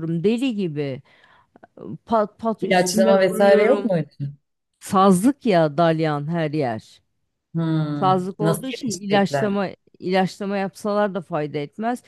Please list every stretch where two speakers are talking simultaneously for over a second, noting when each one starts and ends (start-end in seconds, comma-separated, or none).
2.6-3.9, 8.0-9.6